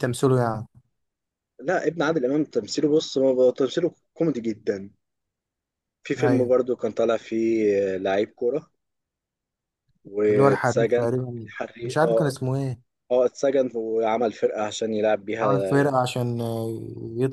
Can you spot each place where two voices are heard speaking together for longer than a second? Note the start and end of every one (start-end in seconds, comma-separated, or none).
10.3-12.4